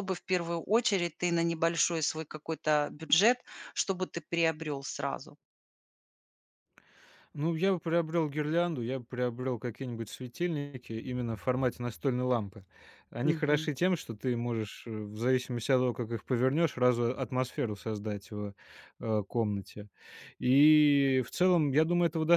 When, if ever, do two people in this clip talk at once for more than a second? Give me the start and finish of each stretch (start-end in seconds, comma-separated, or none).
none